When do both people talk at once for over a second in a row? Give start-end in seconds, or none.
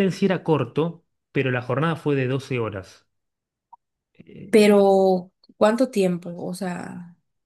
none